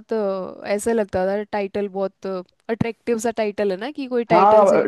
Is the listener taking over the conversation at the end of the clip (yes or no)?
yes